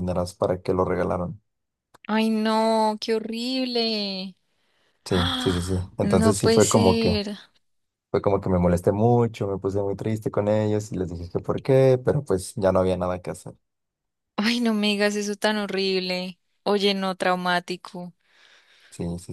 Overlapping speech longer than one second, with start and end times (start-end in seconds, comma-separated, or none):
5.1-7.1